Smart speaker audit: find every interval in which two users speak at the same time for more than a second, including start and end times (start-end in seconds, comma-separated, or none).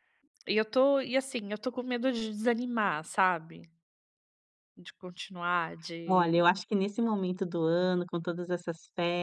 none